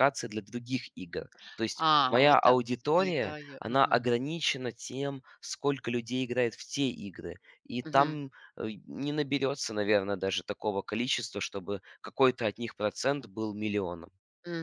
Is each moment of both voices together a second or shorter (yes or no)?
no